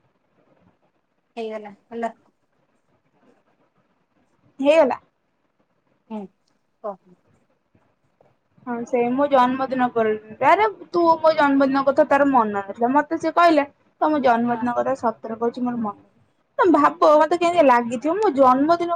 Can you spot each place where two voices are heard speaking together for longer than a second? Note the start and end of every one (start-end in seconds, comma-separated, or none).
none